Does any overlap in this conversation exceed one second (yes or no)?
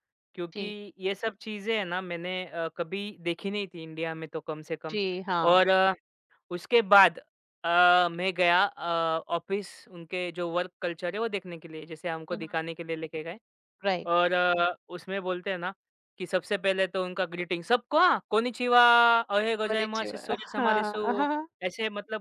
yes